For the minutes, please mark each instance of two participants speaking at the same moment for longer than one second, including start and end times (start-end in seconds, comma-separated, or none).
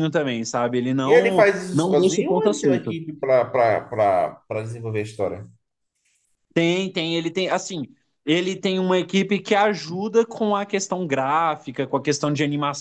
1.0-3.0